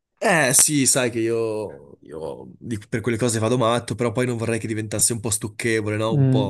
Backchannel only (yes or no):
no